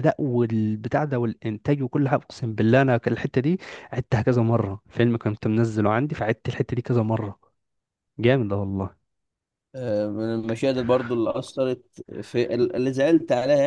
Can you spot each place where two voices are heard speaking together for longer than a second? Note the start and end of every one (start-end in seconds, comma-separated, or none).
none